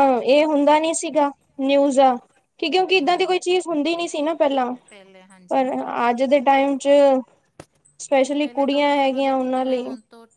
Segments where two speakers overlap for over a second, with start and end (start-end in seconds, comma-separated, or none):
8.4-9.8